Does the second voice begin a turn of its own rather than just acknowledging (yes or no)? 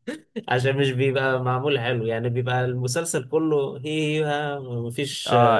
yes